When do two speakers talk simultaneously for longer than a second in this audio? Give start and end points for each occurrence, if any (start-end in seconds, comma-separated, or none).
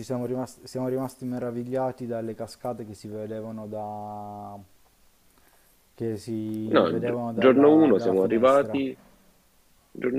6.7-8.8